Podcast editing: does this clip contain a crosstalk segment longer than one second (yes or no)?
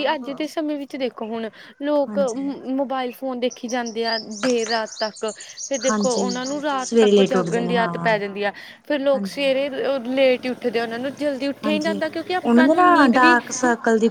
yes